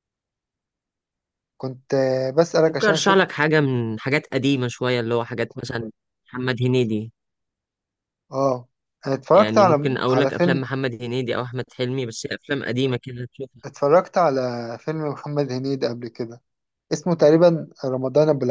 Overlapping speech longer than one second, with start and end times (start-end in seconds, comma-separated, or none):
9.3-10.7